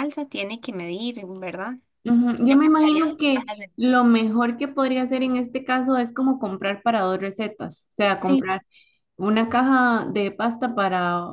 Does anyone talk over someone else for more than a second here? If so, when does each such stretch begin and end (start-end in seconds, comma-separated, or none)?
2.4-4.0